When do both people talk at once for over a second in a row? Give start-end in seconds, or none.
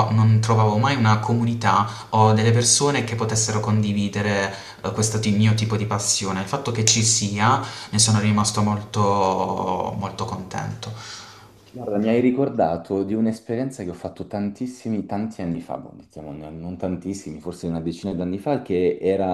none